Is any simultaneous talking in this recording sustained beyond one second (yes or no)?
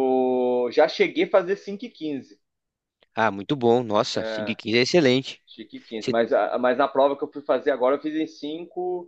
no